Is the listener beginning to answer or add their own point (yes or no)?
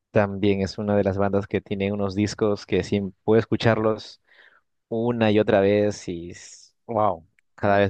yes